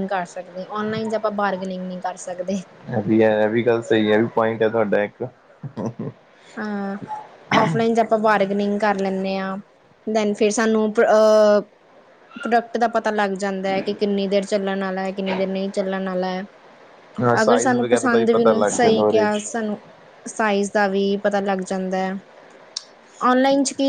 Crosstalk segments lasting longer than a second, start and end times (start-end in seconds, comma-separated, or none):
17.4-19.5